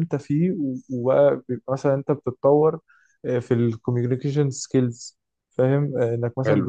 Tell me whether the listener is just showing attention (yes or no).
yes